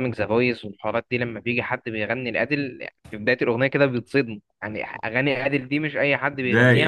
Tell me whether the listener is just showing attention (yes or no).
no